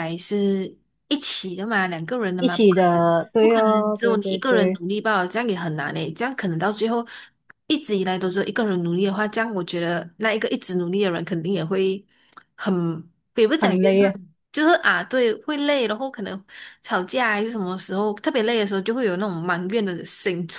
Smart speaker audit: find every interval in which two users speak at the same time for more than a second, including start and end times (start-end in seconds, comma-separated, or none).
2.4-4.8